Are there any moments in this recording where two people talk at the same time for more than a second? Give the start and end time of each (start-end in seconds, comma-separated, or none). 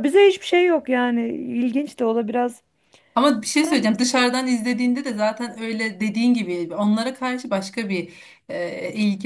none